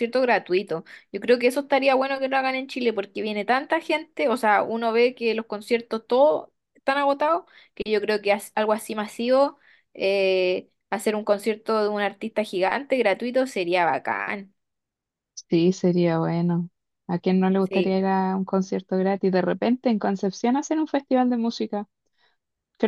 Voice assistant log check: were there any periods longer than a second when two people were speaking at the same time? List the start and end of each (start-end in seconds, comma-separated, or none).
none